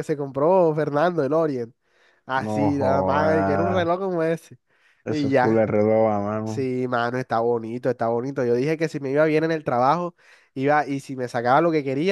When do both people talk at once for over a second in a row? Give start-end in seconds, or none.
2.5-3.9